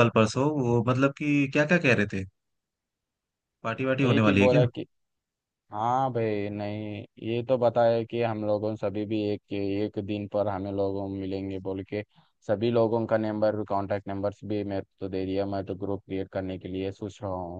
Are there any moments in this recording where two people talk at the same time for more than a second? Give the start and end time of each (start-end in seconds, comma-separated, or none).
none